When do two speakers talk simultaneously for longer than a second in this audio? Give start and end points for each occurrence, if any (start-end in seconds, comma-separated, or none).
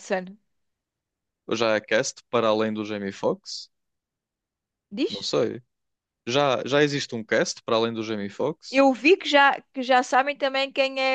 none